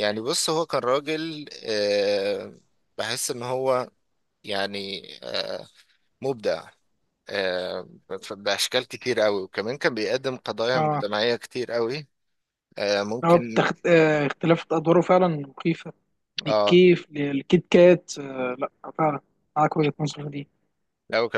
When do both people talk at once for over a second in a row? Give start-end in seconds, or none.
none